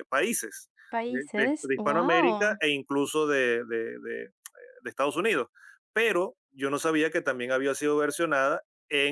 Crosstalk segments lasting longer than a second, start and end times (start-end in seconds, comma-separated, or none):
1.1-2.6